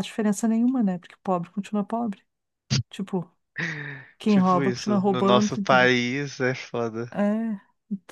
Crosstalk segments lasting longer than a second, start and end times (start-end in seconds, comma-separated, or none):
4.2-5.9